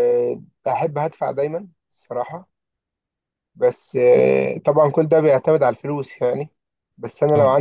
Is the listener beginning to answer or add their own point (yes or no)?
no